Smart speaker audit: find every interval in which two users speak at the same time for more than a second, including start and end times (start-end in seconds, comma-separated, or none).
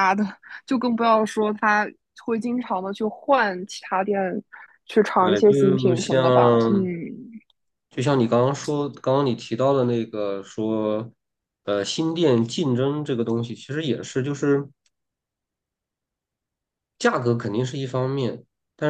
5.2-6.9